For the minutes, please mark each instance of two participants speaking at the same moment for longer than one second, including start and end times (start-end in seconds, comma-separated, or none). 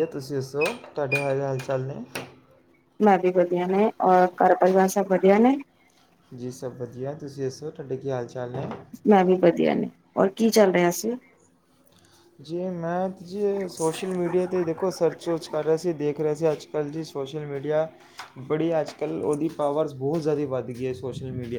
none